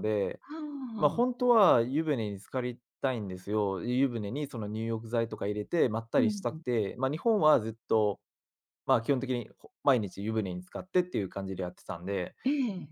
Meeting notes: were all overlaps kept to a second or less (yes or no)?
yes